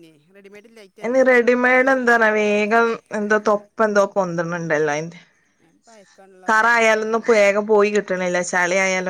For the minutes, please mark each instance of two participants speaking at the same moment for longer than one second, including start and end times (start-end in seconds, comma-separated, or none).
6.5-8.1